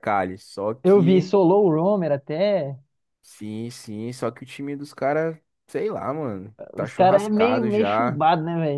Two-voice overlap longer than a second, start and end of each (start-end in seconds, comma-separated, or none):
6.7-8.2